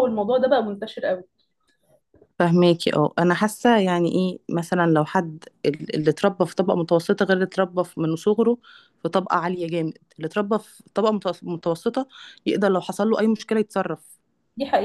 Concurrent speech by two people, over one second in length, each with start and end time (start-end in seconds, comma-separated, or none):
none